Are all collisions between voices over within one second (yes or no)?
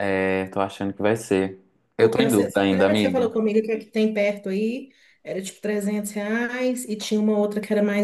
no